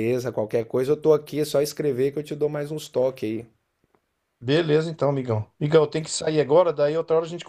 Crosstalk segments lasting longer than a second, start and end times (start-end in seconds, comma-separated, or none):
none